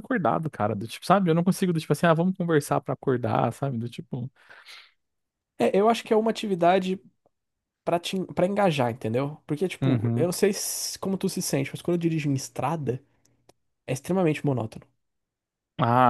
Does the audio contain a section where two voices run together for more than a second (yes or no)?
no